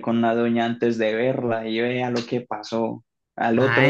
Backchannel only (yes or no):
no